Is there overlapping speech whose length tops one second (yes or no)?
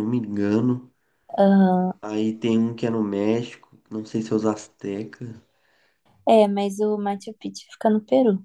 no